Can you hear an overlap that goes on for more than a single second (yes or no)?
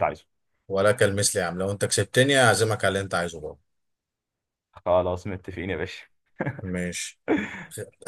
no